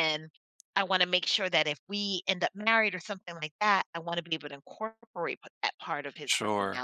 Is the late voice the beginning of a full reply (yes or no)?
yes